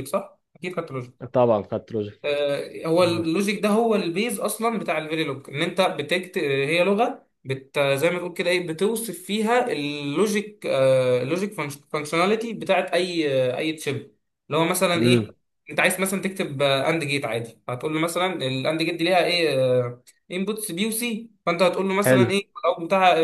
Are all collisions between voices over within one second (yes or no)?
yes